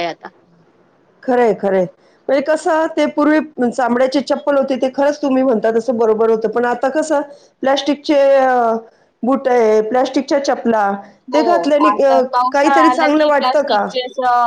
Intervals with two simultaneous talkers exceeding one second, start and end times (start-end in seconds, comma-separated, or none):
12.5-13.9